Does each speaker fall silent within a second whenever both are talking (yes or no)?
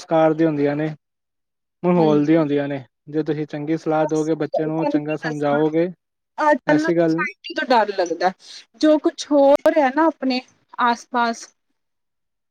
no